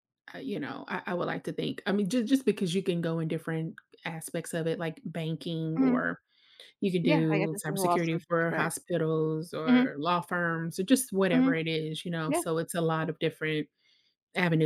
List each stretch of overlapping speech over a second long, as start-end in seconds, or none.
7.0-8.7